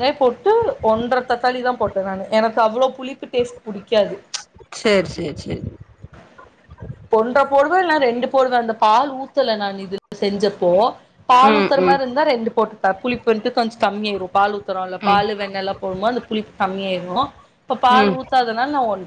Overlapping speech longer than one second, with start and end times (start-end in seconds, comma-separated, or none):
none